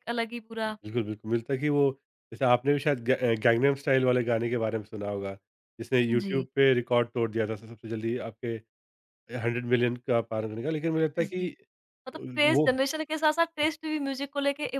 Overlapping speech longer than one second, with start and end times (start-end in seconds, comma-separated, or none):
none